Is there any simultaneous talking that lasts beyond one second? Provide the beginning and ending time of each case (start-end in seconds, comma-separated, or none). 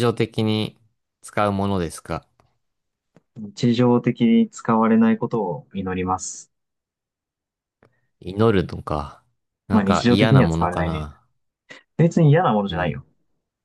9.7-11.1